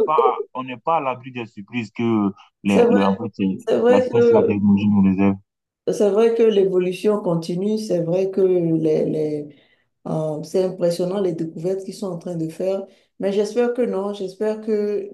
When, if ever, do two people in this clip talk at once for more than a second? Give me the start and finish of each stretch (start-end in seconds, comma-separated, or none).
2.7-4.6